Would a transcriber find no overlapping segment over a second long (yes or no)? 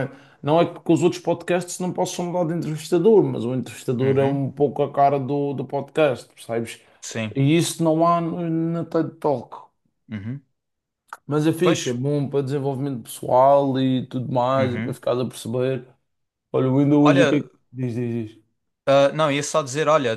yes